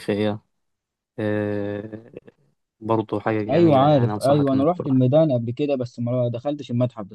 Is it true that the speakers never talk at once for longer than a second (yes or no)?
no